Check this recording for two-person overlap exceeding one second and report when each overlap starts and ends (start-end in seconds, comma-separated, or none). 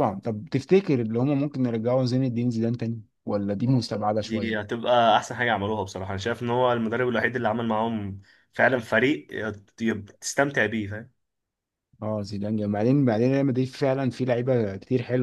none